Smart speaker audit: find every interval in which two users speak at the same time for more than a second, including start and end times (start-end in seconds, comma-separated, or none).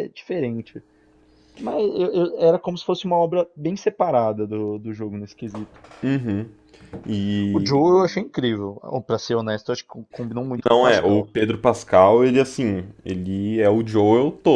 none